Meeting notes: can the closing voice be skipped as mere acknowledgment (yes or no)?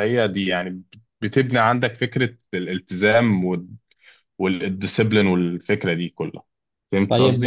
no